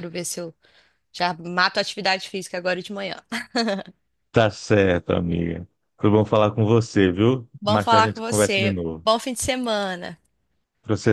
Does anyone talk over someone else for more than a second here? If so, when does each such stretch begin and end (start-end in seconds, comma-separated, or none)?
7.6-9.1